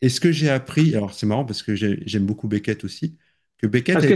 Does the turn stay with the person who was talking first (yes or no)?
no